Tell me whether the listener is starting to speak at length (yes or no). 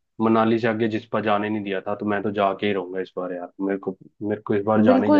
yes